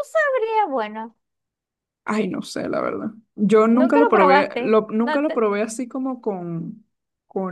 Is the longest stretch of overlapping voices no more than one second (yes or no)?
no